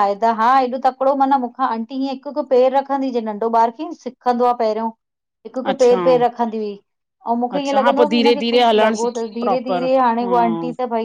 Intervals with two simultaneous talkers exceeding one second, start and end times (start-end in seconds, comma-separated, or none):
7.6-10.3